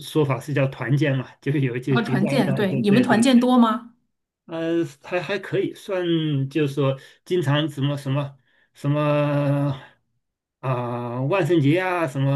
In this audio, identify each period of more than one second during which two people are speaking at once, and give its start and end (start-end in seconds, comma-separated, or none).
1.9-3.3